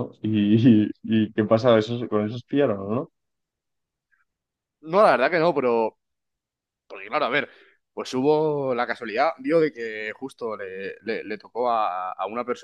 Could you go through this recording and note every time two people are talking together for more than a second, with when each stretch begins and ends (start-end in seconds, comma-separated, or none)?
none